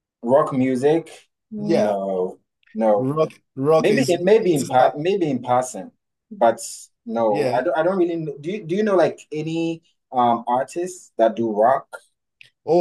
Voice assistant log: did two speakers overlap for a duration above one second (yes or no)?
no